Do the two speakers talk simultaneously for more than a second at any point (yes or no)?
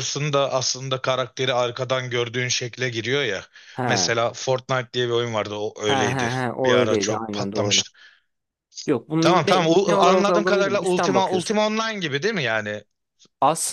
yes